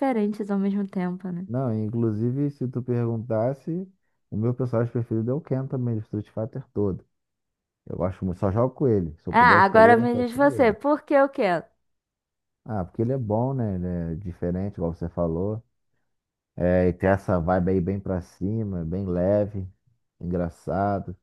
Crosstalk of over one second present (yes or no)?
yes